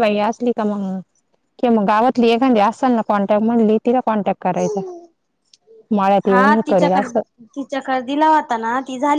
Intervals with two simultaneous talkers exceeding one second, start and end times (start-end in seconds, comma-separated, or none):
none